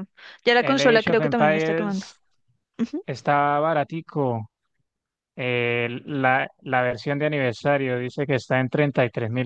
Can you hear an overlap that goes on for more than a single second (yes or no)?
yes